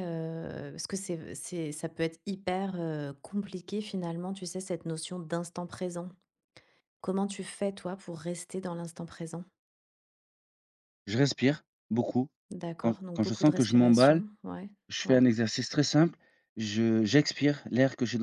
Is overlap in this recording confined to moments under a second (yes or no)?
no